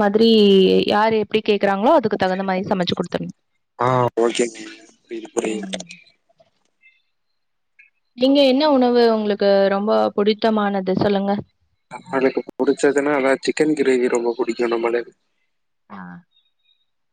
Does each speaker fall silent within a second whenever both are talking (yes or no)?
yes